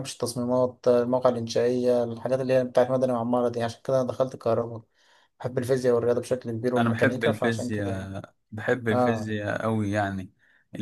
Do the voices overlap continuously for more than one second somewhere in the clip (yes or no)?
yes